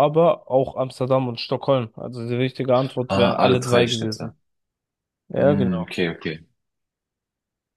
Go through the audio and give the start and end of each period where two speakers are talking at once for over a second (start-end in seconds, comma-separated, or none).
3.1-4.3